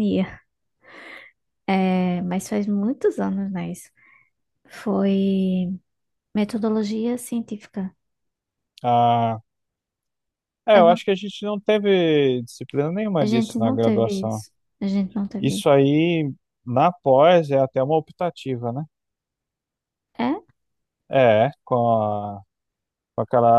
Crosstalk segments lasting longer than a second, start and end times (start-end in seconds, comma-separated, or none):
13.2-14.4